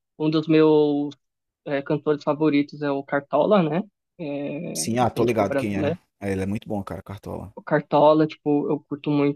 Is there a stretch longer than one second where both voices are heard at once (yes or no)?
yes